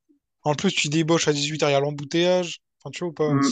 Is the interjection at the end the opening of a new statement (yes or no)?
yes